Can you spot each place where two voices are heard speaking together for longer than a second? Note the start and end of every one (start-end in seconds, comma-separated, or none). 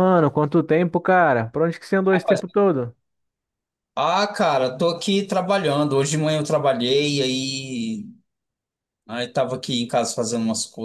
none